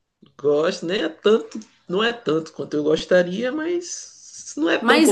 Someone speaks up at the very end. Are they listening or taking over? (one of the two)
taking over